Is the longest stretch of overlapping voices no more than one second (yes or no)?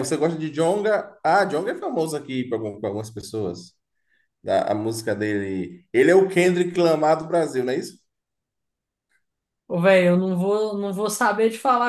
yes